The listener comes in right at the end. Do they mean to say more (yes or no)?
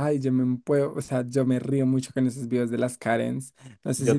no